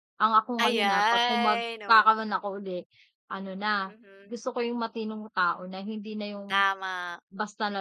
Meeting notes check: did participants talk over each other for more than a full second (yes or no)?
yes